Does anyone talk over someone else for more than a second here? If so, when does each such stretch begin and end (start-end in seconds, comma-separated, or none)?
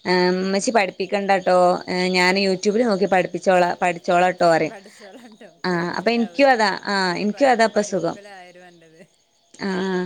5.7-8.2